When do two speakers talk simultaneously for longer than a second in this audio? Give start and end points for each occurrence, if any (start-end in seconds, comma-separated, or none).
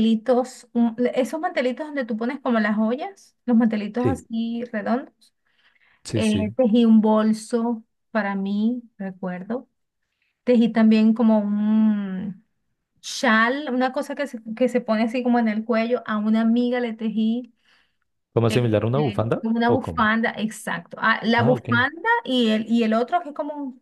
18.5-20.1